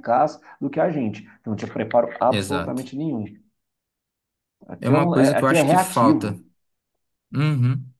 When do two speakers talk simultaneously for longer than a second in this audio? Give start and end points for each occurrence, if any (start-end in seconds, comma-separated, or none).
4.8-6.4